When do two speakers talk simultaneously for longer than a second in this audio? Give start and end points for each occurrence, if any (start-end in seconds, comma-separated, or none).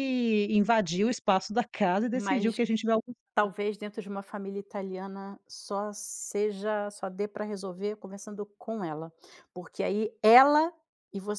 none